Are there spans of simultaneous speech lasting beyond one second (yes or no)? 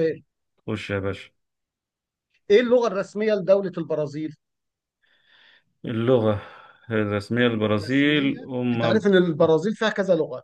yes